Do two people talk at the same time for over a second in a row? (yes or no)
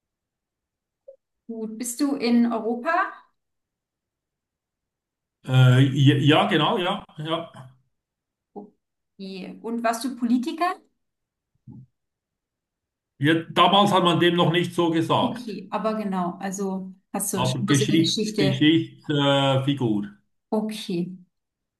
yes